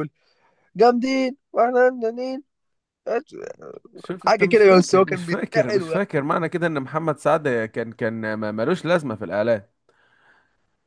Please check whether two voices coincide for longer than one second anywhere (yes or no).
yes